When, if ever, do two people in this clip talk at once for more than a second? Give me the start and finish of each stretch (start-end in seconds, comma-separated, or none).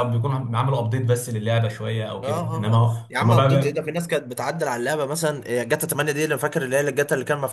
2.2-3.8